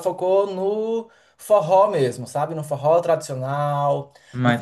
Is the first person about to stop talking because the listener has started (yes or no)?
no